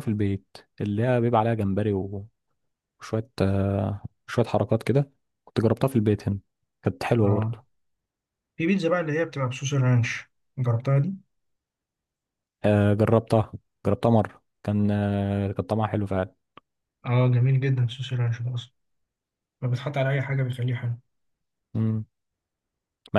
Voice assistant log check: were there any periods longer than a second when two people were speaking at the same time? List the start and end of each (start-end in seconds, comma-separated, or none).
none